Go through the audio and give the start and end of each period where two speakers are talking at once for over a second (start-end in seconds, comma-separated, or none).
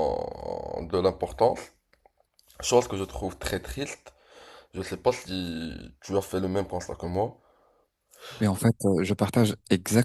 none